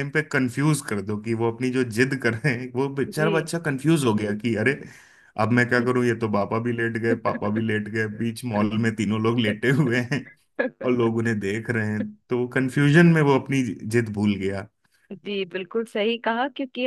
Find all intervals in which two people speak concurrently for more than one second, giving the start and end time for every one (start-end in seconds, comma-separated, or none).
none